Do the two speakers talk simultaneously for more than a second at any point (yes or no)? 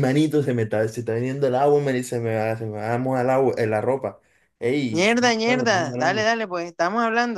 yes